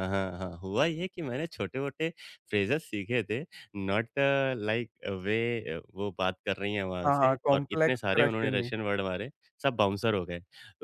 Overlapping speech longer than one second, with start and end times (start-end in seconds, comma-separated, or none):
7.0-8.7